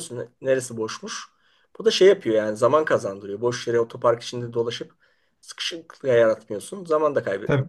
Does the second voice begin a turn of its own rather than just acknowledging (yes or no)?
yes